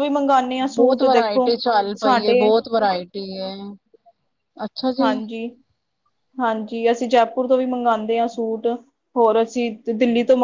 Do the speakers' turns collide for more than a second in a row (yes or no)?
no